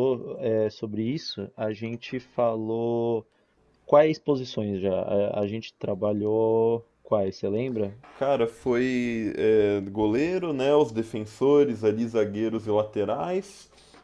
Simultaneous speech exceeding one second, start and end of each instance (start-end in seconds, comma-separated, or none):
none